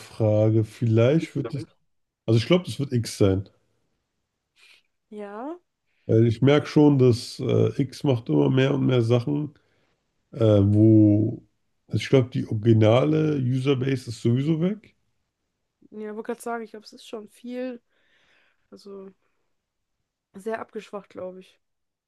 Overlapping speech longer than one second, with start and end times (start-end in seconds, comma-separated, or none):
none